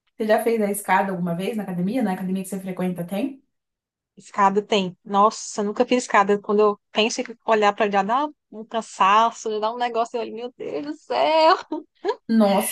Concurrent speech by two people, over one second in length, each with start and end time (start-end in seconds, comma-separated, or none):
none